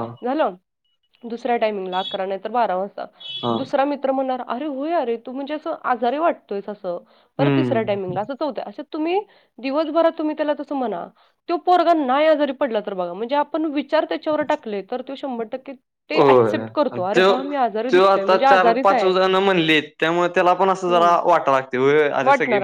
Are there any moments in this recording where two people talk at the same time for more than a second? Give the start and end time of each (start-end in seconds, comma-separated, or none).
none